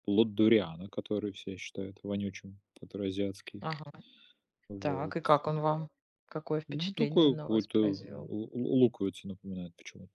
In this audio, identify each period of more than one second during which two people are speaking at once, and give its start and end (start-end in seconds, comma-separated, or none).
6.7-8.3